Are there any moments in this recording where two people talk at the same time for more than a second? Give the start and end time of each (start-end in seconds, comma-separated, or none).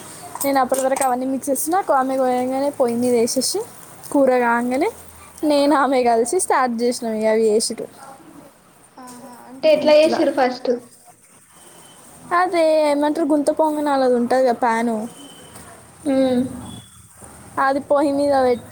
none